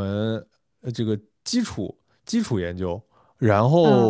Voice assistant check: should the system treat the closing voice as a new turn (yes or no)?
no